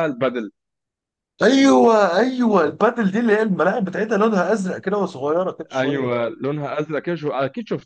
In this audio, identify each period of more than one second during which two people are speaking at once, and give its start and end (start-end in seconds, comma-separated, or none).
none